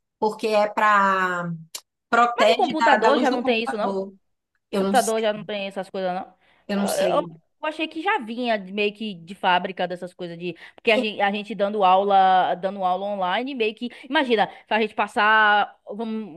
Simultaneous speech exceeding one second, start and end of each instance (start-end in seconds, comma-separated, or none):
2.3-3.9